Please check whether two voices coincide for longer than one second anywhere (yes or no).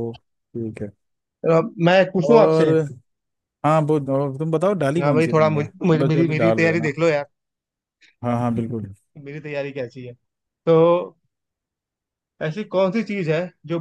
yes